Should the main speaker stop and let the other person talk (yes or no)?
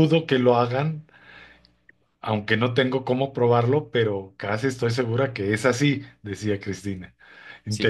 yes